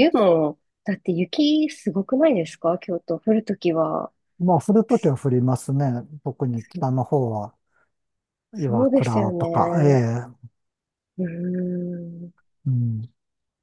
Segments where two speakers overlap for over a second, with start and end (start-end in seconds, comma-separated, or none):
8.5-9.9